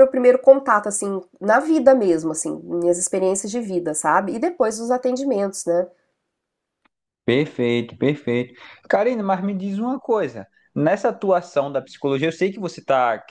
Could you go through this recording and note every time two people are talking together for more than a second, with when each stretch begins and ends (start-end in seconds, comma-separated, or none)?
none